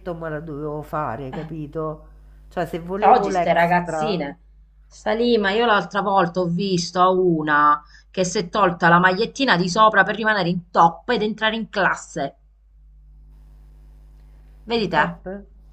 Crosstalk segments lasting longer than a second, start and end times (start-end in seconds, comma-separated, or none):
3.0-4.3